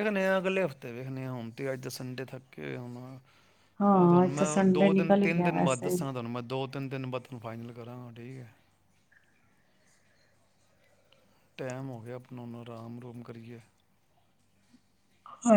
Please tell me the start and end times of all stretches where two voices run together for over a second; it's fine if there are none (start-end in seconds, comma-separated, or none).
3.8-6.0